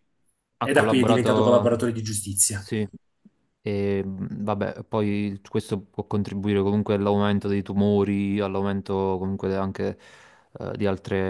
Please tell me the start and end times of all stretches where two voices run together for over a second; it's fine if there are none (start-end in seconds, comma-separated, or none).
0.6-1.9